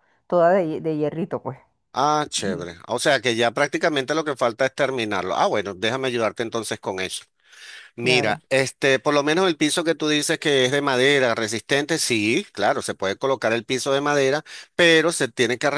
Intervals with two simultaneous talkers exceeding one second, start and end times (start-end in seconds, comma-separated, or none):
none